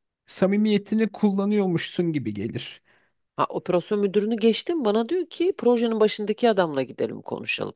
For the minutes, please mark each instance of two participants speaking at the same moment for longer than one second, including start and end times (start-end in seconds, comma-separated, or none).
none